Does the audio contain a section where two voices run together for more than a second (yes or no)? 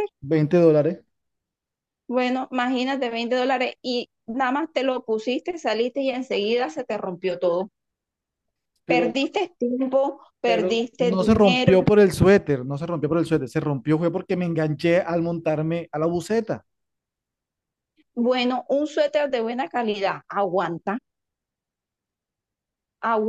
yes